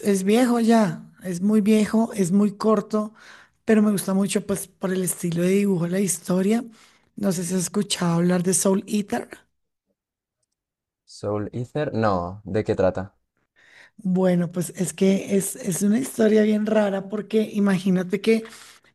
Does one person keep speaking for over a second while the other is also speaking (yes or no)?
no